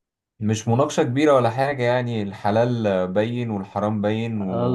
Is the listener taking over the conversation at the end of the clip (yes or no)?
yes